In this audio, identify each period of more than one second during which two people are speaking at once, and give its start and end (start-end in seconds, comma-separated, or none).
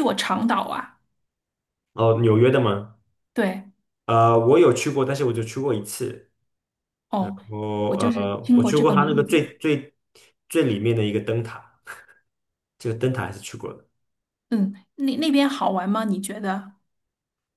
7.9-9.4